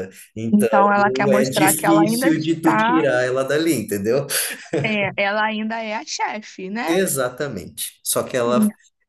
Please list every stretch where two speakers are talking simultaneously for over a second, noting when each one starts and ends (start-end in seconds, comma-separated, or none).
1.3-3.0